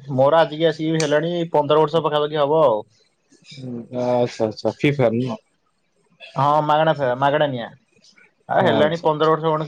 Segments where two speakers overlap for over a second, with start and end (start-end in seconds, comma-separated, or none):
none